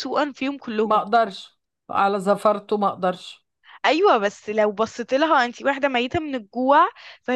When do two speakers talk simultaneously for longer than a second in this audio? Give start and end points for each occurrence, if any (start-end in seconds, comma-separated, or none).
none